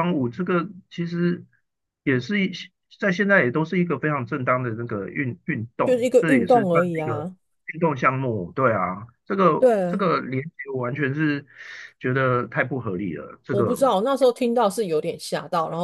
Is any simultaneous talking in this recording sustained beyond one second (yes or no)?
yes